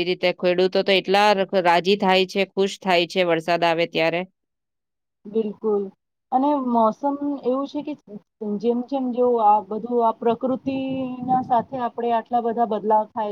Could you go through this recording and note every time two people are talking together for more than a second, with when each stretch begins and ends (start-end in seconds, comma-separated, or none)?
none